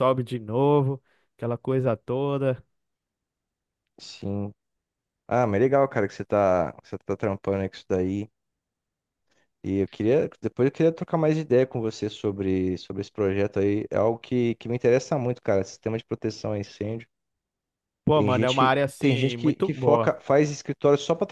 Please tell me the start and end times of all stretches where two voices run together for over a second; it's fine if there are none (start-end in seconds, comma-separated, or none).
18.1-20.1